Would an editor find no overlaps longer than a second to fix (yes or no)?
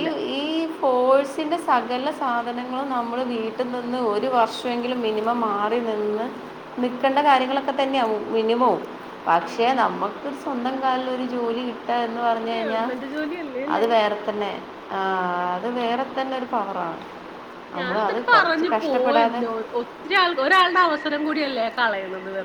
no